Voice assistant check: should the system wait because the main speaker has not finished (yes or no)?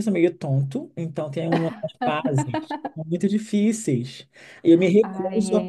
no